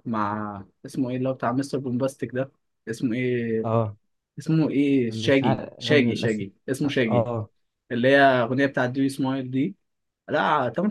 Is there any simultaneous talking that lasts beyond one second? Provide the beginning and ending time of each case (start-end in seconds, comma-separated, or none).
5.1-6.5